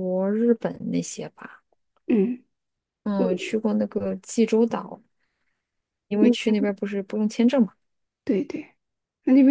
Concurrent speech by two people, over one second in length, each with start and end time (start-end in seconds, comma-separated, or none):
none